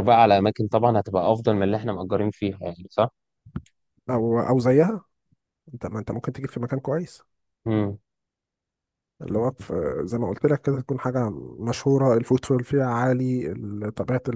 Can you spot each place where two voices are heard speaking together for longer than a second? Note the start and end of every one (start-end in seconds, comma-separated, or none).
none